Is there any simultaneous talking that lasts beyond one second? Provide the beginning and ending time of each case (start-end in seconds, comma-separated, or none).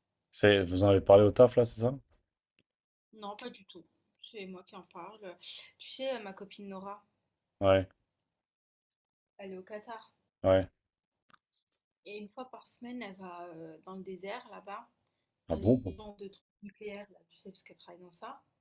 none